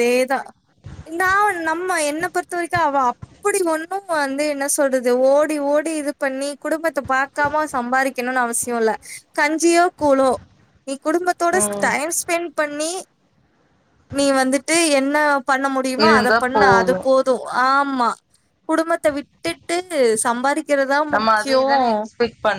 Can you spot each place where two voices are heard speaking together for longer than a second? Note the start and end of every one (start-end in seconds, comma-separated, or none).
none